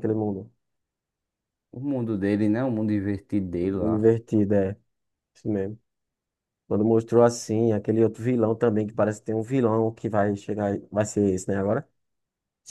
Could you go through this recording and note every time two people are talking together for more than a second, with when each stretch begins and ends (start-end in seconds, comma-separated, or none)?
none